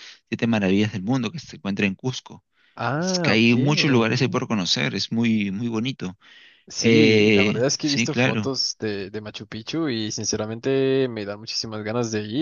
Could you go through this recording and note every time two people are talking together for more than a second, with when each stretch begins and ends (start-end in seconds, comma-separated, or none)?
6.8-8.5